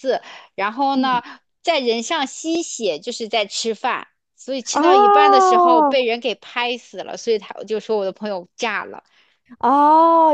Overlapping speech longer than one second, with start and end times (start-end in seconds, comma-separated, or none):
4.7-6.0